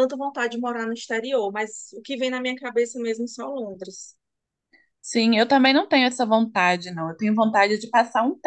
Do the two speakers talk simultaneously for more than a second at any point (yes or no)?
no